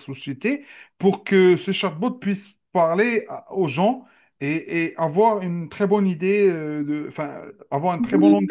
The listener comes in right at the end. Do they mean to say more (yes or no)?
yes